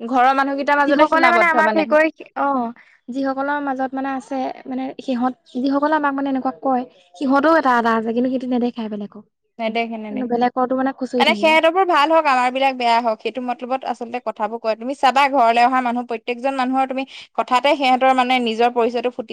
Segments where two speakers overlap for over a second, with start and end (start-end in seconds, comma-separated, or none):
10.1-11.5